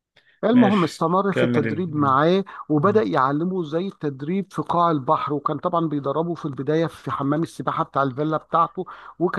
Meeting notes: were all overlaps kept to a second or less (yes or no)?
no